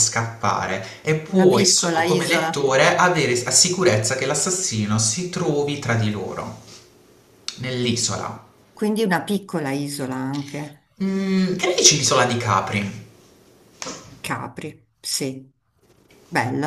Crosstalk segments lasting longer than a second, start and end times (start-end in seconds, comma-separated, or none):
1.3-2.6